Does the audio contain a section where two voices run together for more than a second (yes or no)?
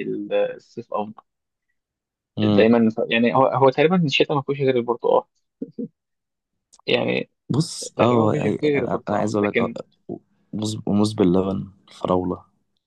yes